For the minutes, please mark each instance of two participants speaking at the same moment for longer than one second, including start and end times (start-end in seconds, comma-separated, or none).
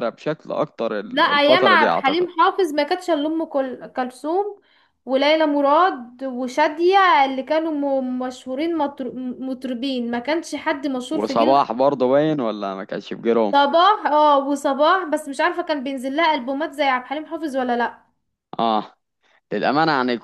1.0-2.3